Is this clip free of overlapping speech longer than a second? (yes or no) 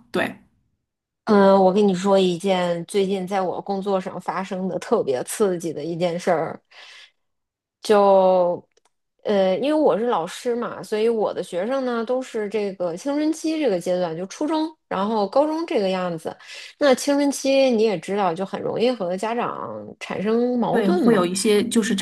yes